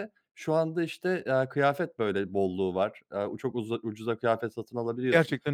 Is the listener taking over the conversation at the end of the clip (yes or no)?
no